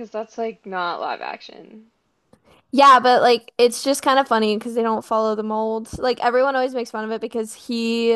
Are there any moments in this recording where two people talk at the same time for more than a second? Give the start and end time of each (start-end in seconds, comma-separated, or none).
none